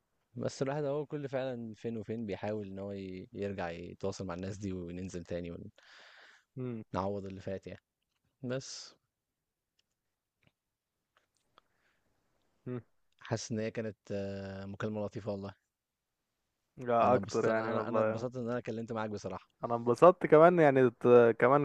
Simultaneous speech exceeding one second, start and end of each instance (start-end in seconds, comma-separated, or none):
17.0-18.2